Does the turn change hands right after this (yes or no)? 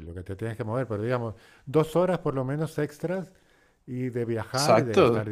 yes